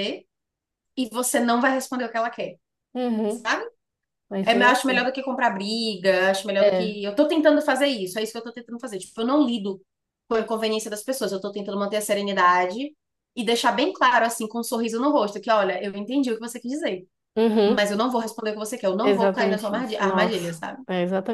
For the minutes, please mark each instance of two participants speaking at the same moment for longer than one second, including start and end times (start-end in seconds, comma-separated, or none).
19.0-20.8